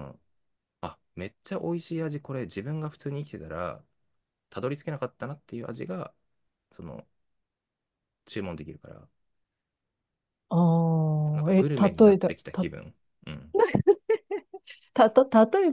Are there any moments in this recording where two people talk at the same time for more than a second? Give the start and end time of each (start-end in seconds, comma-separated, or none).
11.3-12.7